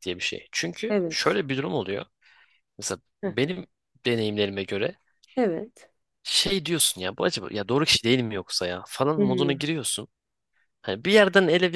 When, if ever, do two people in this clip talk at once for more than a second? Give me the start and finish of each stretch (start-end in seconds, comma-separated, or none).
none